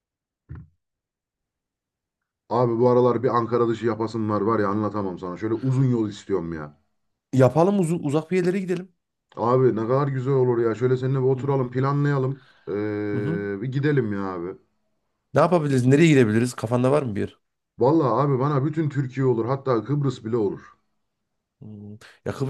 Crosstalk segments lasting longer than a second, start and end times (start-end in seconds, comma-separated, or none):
none